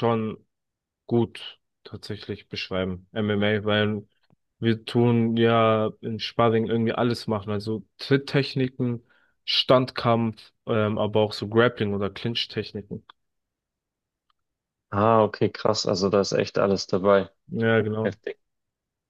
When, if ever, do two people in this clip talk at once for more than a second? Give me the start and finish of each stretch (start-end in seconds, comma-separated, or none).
none